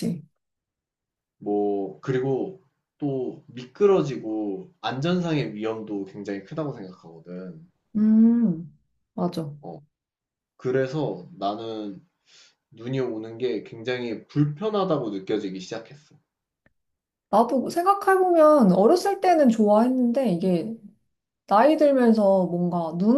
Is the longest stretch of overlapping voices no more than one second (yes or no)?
yes